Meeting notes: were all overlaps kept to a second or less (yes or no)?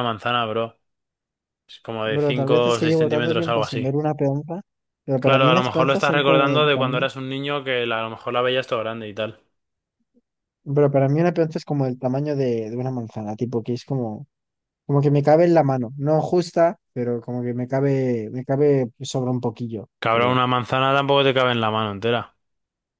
no